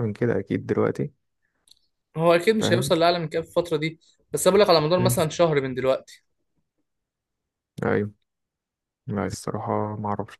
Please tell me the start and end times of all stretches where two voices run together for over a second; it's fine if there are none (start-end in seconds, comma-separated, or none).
none